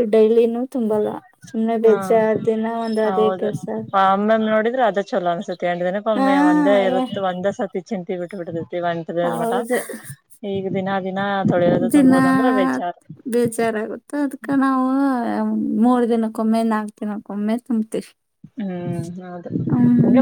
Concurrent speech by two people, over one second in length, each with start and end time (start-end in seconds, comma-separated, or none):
none